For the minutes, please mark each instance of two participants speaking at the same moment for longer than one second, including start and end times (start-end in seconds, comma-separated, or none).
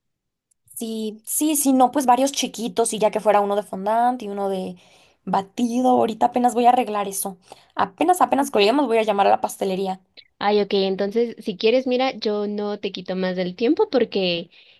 none